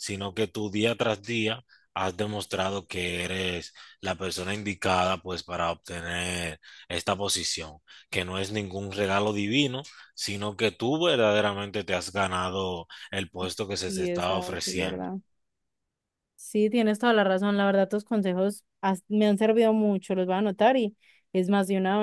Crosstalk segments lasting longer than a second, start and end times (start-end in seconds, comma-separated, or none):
13.9-15.1